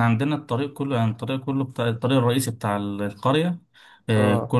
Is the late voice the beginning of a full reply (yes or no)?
no